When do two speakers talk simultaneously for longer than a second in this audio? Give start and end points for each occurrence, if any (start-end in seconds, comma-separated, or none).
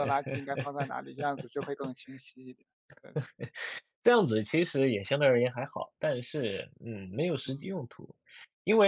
none